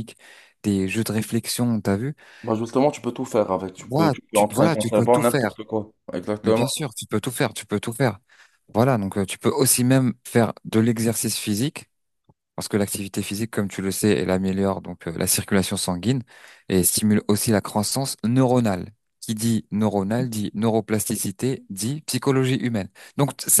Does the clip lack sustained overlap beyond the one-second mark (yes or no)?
no